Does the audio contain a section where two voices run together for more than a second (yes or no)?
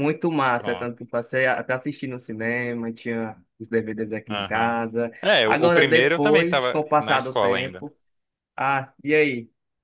yes